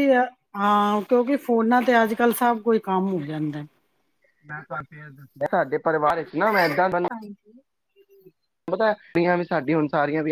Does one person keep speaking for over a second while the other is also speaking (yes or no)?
no